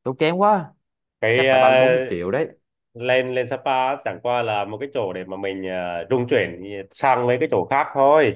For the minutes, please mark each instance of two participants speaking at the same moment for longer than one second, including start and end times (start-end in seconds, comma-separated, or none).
none